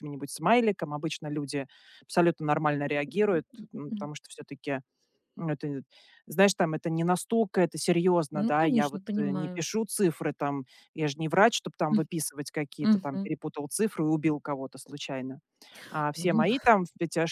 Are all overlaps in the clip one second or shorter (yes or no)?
no